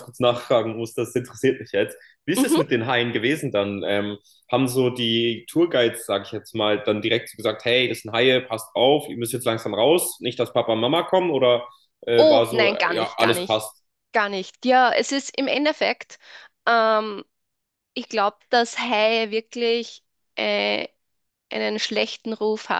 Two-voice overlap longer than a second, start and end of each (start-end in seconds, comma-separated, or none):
12.2-13.6